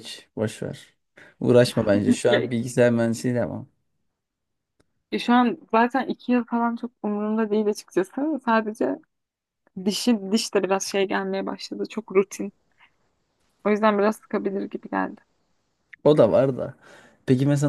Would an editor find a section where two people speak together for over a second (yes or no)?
no